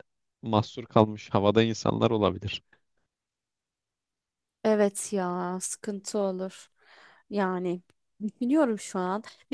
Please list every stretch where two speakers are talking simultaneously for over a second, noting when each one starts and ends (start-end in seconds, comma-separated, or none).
none